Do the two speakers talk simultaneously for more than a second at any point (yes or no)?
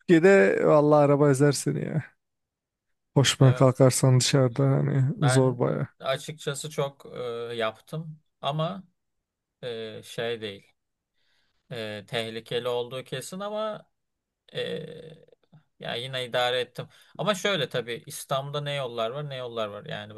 no